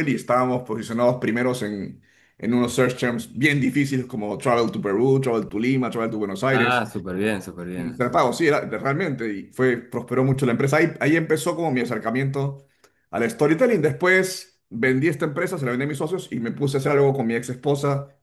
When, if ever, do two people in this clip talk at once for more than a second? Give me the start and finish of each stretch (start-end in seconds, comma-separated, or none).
none